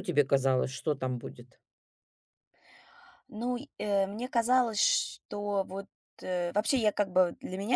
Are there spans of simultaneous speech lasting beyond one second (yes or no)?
no